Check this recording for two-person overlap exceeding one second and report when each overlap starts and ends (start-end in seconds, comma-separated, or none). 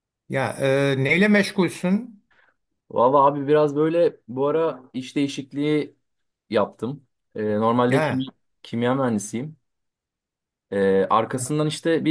none